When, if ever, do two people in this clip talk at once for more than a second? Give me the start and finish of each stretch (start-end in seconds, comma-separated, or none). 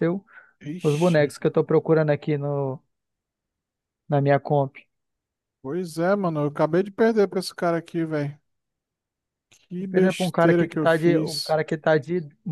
9.9-11.6